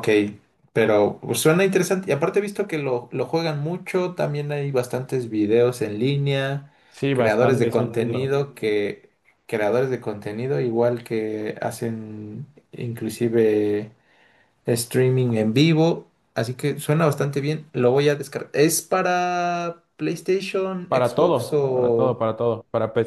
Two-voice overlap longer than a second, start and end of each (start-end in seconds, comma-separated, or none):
7.1-8.3, 20.9-22.2